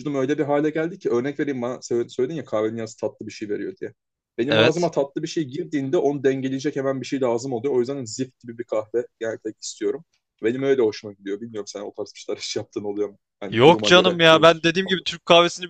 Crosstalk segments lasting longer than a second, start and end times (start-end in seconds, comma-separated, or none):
13.5-15.1